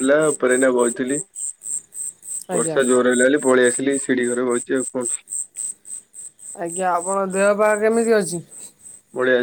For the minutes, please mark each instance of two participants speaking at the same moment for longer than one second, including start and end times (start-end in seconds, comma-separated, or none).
none